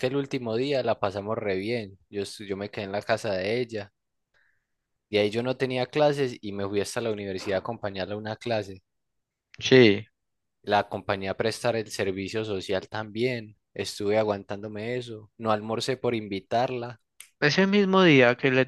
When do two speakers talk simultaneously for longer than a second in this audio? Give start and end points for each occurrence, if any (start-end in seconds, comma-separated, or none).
none